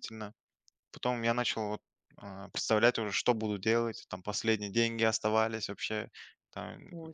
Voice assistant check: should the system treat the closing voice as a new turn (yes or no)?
no